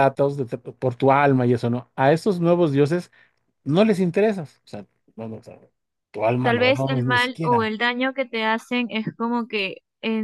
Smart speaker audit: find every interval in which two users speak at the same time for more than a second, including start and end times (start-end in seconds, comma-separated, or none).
6.4-7.7